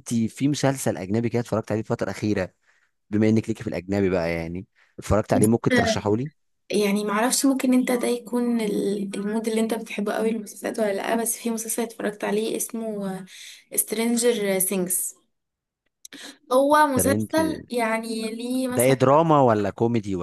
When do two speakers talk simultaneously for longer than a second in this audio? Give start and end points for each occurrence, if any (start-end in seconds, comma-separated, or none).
none